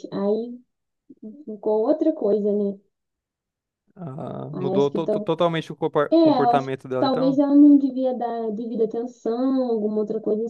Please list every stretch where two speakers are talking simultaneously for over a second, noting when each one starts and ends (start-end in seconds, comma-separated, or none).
6.1-7.4